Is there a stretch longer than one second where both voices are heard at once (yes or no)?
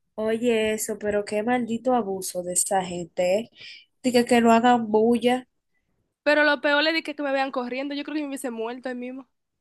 no